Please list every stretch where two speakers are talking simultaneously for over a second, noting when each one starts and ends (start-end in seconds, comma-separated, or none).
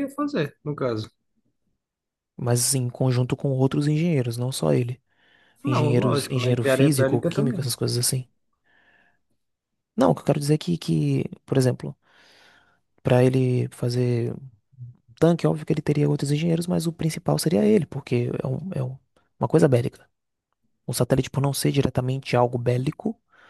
5.7-7.7